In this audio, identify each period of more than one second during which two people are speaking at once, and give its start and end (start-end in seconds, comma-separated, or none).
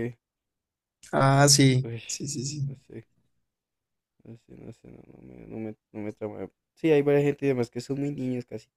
none